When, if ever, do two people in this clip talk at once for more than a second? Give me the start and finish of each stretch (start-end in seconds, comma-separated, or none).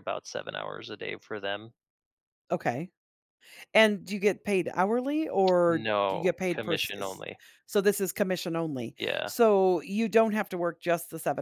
5.7-7.2